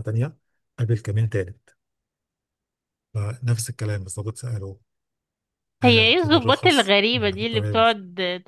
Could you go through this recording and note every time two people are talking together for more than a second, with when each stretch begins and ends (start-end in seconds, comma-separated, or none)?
5.8-7.8